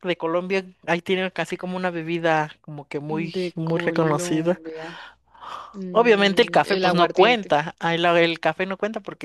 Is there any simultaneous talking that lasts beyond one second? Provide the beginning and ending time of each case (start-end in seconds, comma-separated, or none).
3.1-4.6, 5.9-7.5